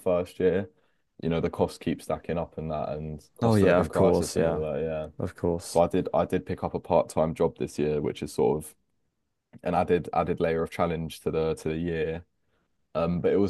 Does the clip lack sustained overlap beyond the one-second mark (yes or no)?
no